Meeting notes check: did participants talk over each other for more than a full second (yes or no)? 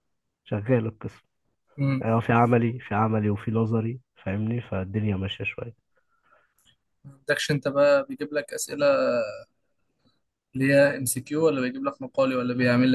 no